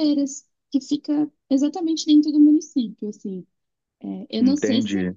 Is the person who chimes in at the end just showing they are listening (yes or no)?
yes